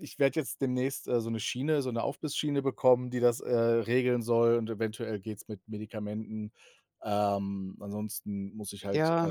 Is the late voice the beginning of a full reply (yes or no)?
yes